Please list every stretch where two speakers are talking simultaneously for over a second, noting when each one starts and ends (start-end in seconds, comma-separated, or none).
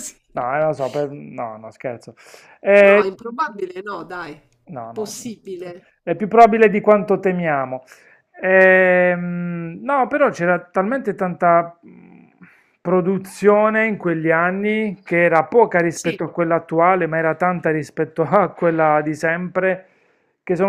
none